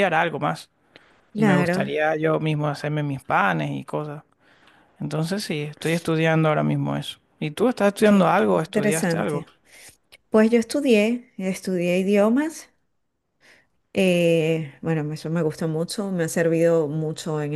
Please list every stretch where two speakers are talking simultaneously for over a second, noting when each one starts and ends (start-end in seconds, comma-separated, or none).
8.0-9.4